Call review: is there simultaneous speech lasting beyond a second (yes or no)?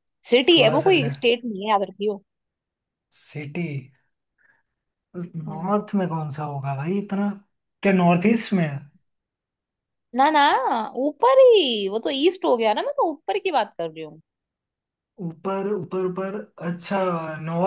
no